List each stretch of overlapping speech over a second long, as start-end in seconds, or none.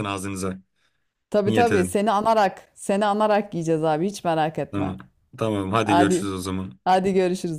none